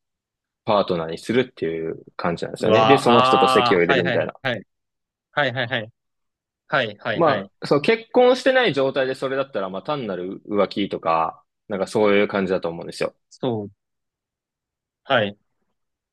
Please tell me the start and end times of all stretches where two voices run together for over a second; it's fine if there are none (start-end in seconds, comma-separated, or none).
2.6-4.3